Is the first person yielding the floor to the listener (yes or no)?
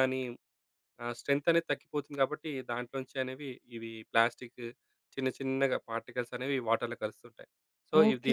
yes